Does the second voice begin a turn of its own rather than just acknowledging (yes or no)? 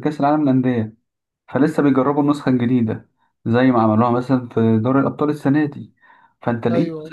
no